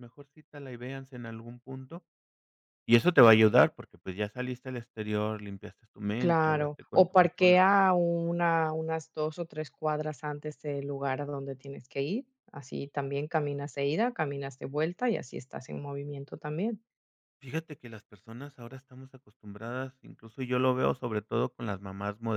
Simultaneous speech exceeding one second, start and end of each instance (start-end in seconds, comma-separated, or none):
6.2-7.5